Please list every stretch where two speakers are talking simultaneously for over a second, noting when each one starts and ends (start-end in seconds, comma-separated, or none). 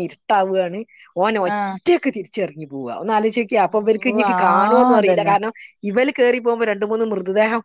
3.6-5.3